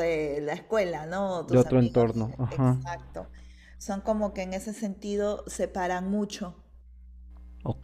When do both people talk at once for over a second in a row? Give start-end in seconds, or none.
1.5-2.8